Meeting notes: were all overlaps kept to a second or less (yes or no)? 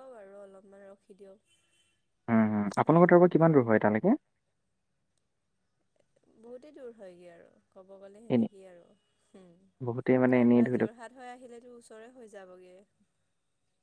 yes